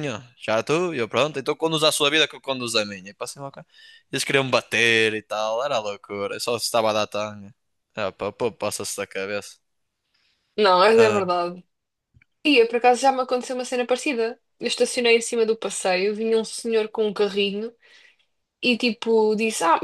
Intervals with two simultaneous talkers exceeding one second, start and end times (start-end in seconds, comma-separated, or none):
none